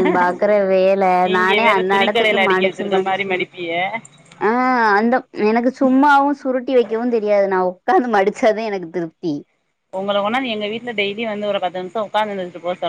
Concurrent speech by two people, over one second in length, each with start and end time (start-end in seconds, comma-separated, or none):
1.3-3.2